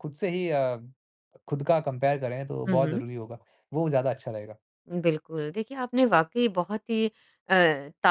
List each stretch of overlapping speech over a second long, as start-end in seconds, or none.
none